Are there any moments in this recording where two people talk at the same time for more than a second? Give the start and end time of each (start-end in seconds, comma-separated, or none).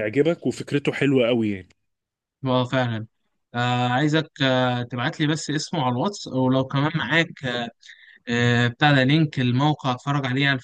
none